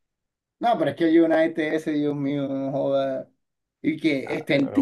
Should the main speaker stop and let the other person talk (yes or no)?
no